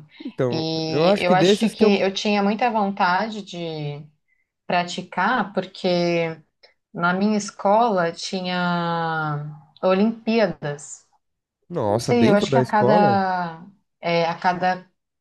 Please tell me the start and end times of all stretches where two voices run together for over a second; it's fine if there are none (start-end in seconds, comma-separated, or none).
0.5-1.9, 11.8-13.2